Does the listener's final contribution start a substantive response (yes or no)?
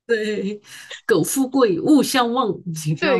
yes